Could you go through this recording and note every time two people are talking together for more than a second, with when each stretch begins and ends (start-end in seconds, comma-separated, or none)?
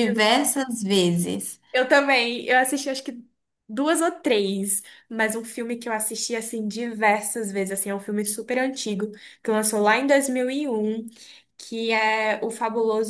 none